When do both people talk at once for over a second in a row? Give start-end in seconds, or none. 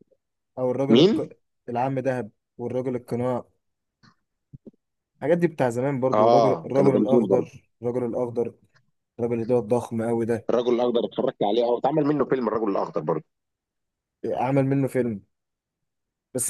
6.1-7.5